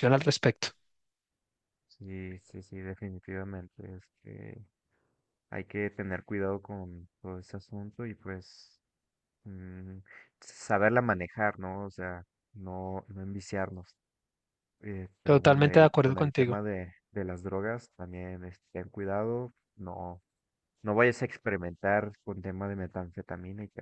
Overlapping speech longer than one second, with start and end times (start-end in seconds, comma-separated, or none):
15.2-16.6